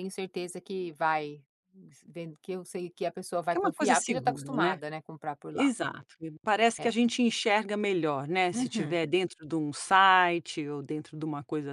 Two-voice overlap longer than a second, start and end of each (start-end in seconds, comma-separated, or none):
3.5-4.8